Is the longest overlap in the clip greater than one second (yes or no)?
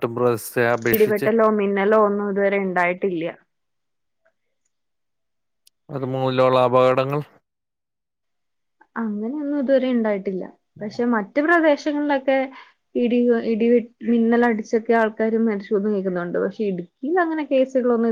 no